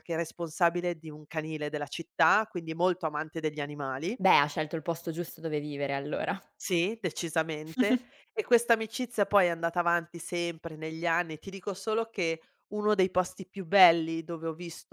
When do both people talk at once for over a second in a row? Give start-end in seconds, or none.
none